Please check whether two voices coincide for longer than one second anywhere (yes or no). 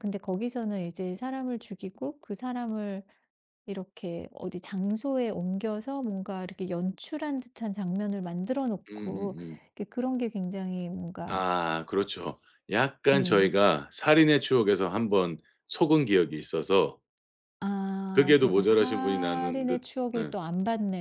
yes